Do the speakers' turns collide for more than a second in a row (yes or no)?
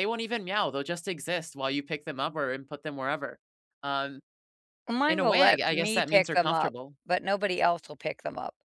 yes